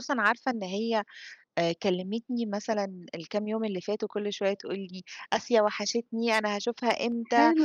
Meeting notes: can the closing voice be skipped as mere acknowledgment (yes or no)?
yes